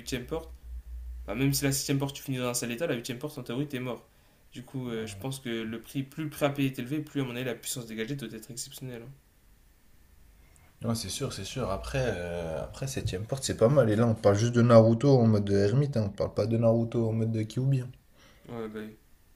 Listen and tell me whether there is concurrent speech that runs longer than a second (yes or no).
no